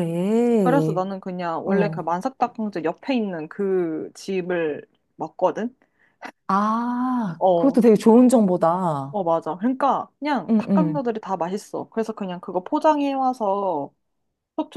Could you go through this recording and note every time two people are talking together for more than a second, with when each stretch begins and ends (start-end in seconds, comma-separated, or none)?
none